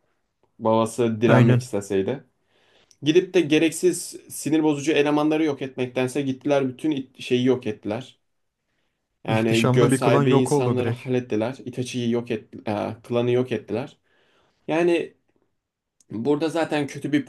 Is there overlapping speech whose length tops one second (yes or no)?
yes